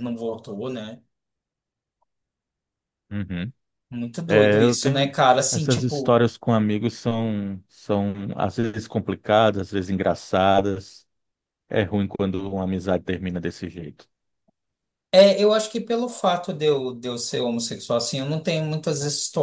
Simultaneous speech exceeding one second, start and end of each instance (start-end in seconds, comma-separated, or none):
4.3-6.2